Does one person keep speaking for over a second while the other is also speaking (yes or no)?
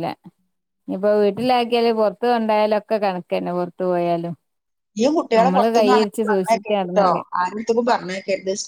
yes